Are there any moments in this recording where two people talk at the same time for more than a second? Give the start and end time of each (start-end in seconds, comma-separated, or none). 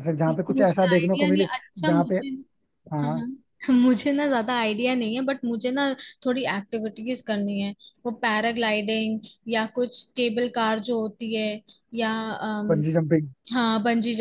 0.5-2.1